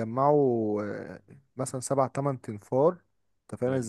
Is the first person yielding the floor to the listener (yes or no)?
no